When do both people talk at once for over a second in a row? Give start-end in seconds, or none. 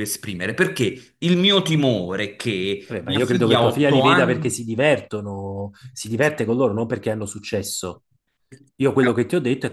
2.9-4.7